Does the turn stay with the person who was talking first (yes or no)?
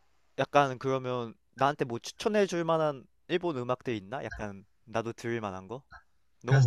no